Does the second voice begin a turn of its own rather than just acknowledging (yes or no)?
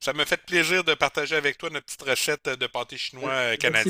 yes